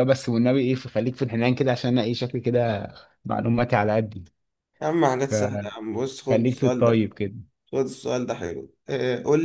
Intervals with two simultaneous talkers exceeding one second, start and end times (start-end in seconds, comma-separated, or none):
5.3-6.9